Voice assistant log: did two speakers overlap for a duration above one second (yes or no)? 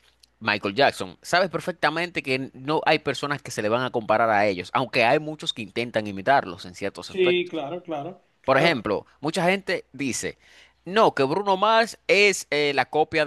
no